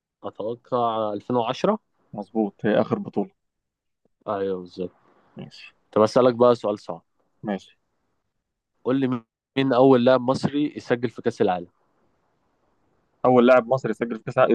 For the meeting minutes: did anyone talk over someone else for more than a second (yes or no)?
no